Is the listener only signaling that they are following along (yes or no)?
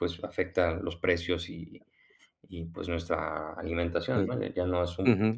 no